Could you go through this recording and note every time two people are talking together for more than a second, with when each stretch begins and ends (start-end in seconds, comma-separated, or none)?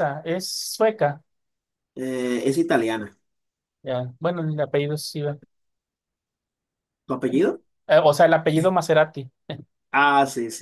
none